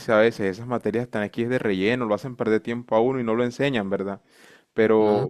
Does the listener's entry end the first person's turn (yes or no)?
no